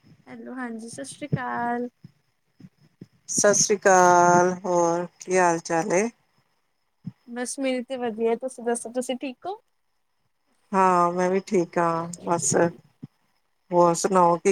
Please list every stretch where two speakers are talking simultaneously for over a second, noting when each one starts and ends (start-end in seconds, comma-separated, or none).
none